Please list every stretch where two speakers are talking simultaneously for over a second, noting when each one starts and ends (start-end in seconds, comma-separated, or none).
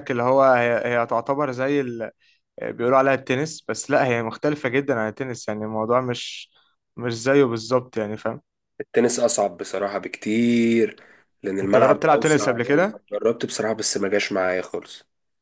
11.6-13.0